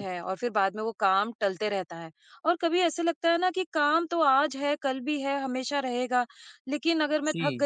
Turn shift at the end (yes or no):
no